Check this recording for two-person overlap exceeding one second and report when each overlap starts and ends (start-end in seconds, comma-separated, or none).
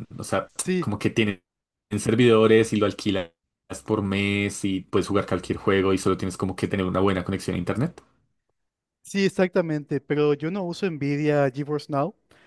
none